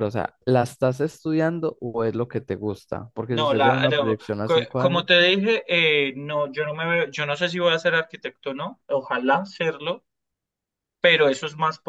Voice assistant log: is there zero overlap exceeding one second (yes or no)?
no